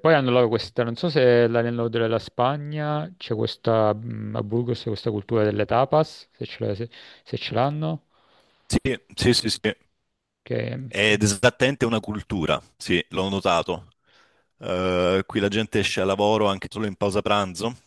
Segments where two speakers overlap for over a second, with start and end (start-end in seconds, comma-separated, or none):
none